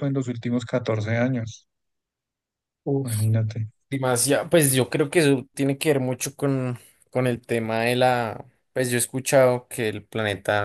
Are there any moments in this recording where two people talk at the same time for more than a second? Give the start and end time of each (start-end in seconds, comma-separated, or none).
none